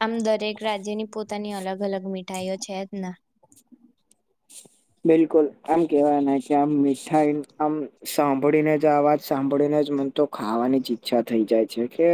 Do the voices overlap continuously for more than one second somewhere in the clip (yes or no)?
no